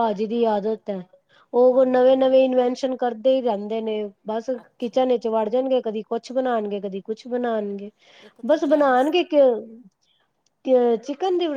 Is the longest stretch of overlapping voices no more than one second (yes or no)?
yes